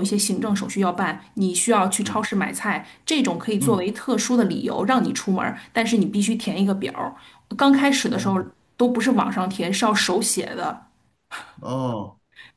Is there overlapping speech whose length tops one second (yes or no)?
no